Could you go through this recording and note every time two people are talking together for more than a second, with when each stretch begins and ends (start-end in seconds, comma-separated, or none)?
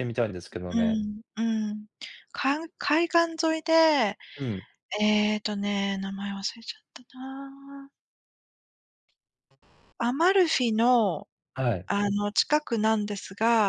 none